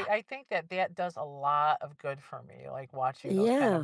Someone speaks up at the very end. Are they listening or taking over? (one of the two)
taking over